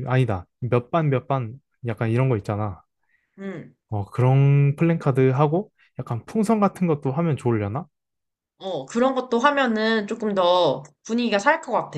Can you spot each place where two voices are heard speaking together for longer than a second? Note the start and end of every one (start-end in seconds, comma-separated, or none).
none